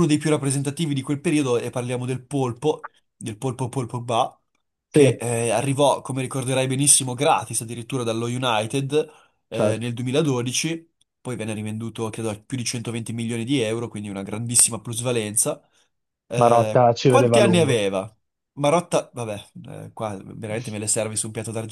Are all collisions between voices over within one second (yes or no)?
no